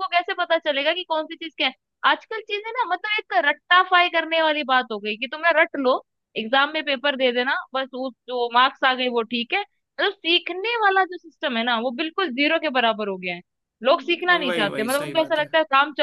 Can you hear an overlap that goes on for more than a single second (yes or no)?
yes